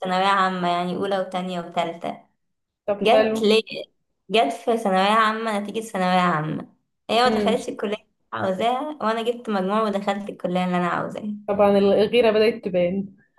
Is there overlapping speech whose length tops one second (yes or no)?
no